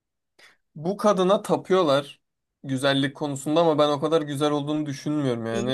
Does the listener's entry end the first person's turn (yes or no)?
no